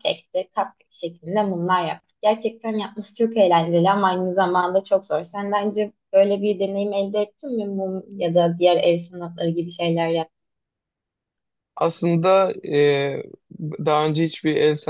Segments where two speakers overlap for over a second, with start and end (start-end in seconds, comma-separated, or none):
none